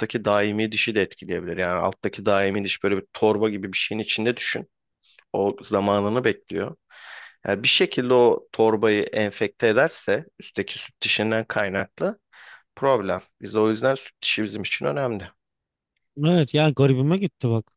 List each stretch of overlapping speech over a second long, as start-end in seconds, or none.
none